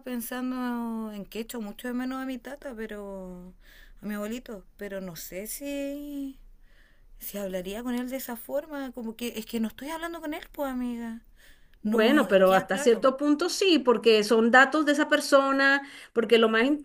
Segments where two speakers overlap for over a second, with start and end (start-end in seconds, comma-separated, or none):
11.8-13.1